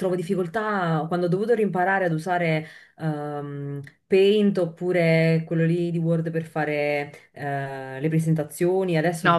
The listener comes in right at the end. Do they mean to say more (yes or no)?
yes